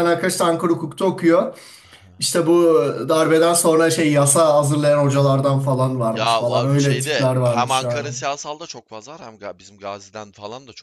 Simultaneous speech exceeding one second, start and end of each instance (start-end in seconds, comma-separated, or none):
6.1-8.1